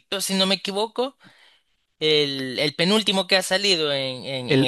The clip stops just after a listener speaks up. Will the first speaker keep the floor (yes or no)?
yes